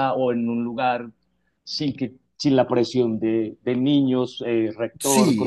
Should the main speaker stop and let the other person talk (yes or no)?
yes